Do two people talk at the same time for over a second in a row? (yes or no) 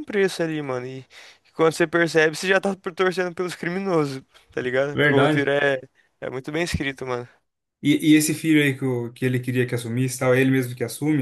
no